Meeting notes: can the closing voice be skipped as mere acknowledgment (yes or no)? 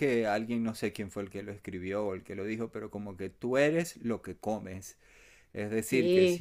yes